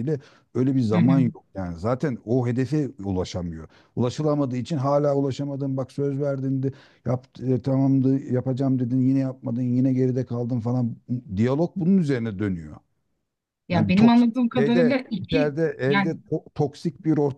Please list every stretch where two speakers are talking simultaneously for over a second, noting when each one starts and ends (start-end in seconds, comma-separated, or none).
13.7-16.2